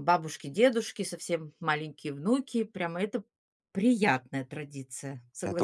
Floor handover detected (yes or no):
yes